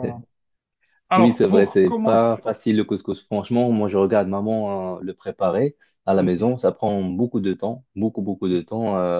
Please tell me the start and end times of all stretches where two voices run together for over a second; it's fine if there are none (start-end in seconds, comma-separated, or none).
1.2-2.4